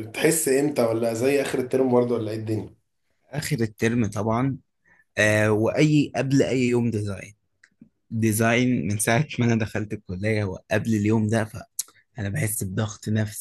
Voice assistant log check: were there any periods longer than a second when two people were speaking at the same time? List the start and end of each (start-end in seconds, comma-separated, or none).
none